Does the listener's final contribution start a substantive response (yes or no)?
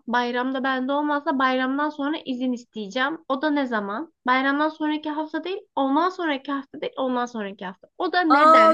yes